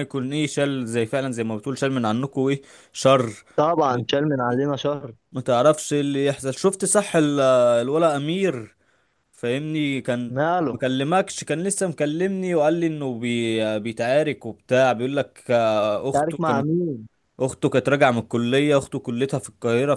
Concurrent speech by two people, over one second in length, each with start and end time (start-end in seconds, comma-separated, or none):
none